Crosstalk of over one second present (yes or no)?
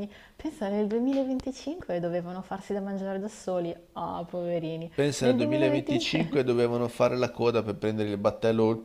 yes